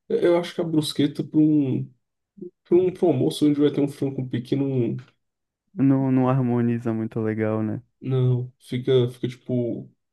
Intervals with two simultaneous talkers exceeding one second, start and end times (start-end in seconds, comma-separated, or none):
none